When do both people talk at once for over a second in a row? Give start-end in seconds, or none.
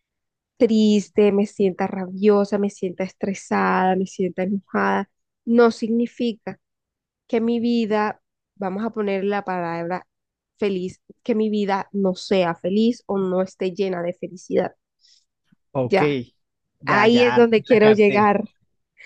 16.9-18.3